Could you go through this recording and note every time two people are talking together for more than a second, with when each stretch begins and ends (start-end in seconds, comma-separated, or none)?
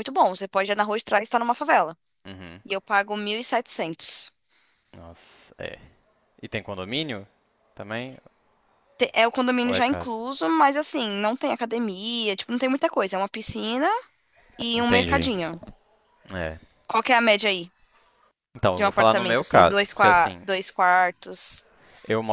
18.7-20.4